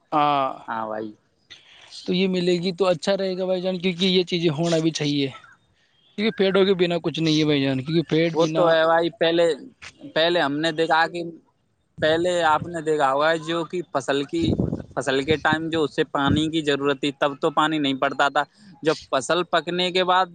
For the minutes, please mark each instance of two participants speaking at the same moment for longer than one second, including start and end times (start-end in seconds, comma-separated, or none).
none